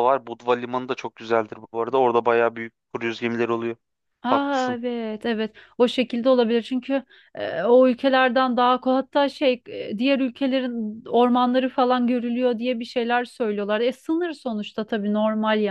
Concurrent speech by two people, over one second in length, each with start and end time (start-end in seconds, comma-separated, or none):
none